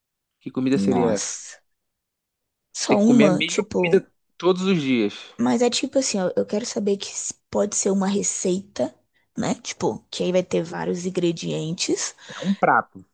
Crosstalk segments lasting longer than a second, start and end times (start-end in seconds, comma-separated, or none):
2.9-4.1